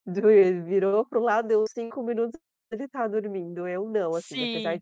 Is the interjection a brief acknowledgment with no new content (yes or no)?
yes